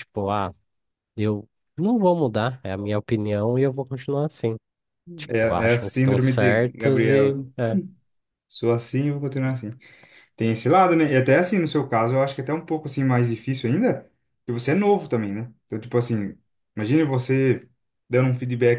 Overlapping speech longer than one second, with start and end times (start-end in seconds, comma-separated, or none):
5.3-7.4